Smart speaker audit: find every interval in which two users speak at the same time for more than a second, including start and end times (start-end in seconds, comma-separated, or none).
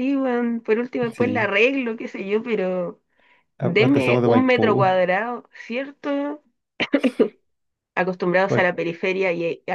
3.6-5.0